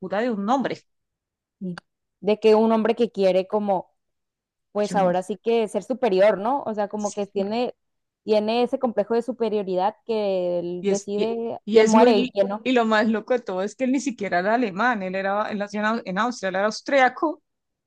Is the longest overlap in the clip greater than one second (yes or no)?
yes